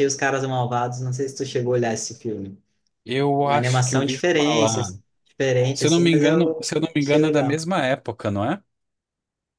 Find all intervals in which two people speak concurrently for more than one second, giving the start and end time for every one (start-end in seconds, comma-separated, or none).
3.4-4.8, 5.7-7.6